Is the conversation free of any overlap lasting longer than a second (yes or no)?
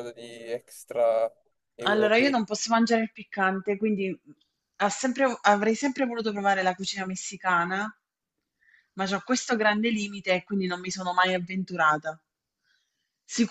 yes